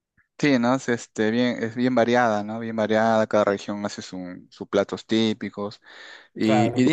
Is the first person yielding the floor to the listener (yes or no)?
no